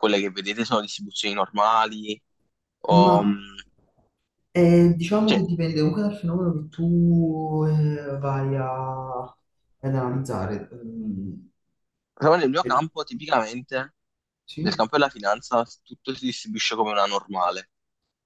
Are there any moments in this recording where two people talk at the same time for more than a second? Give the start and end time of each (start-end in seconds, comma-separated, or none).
none